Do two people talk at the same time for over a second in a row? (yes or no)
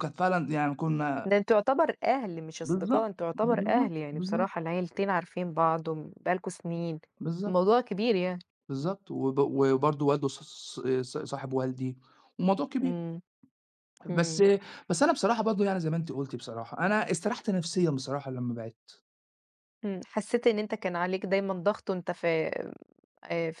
yes